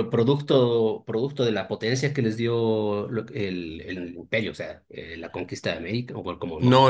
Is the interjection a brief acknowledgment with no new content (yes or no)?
no